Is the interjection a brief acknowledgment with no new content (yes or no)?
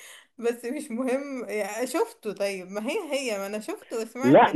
no